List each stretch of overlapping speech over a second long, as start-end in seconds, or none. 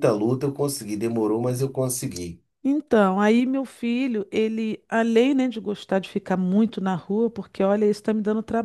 none